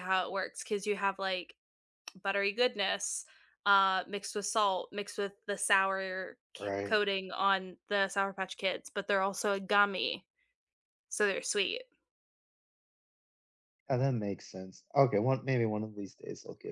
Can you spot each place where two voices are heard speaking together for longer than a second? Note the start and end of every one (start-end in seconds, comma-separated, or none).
none